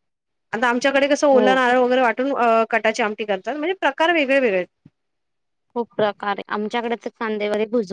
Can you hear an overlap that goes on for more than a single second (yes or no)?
no